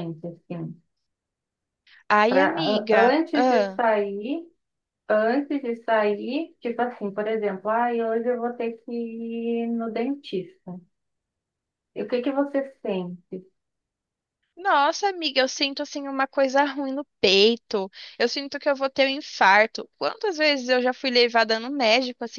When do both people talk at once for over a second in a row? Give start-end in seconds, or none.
2.3-3.8